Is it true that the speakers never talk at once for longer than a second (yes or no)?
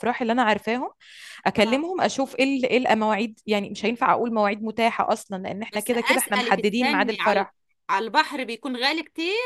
no